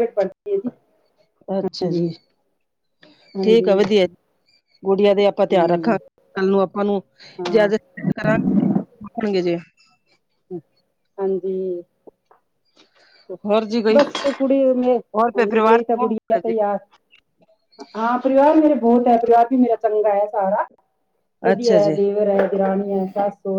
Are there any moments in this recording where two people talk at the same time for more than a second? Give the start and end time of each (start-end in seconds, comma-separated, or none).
15.0-16.5